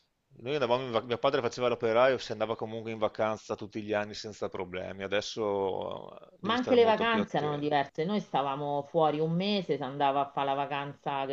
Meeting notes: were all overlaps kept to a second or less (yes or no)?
no